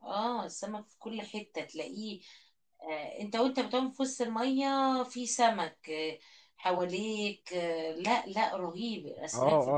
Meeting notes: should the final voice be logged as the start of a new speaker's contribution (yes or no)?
yes